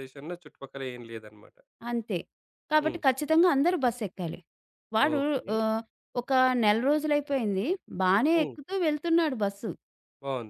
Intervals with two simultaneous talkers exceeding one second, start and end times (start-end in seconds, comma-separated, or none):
none